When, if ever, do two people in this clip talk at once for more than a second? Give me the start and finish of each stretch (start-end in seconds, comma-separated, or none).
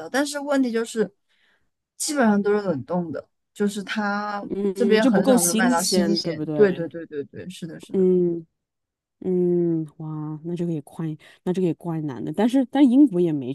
4.5-6.9